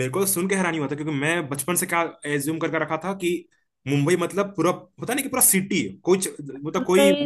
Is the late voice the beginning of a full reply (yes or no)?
no